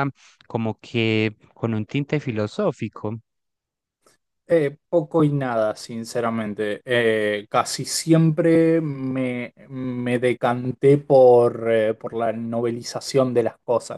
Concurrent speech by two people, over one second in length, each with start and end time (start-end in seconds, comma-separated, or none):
none